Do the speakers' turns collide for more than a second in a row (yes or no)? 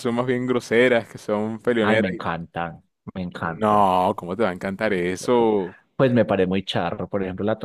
no